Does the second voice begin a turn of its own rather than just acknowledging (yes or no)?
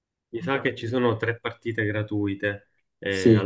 yes